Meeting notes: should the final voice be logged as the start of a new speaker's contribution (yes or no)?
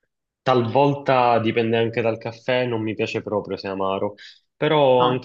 no